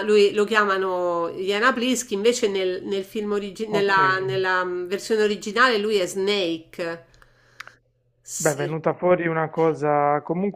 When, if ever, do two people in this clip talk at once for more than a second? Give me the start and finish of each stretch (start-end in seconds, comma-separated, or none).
none